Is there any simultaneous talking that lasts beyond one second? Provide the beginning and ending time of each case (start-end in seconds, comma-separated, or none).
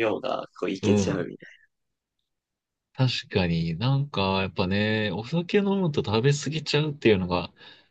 none